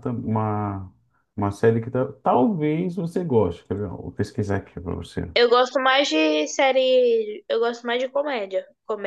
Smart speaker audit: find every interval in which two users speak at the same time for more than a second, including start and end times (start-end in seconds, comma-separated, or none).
none